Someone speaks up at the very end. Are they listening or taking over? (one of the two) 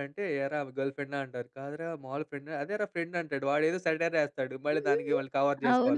taking over